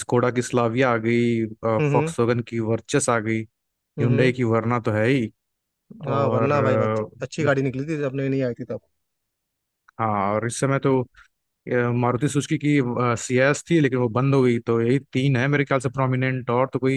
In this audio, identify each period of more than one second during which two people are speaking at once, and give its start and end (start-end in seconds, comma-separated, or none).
none